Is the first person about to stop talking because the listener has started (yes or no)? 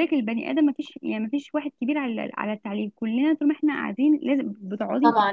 yes